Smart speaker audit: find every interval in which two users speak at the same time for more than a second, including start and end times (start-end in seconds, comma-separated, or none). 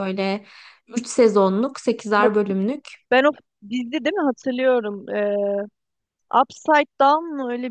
none